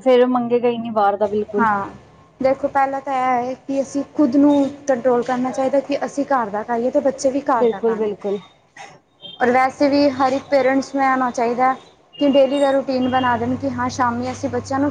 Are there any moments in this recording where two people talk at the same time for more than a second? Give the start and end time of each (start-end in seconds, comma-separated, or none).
none